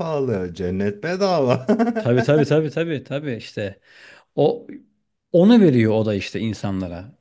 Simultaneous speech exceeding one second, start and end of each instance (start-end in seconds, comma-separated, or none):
none